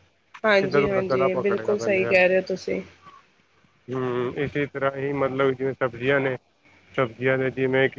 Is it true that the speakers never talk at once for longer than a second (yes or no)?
no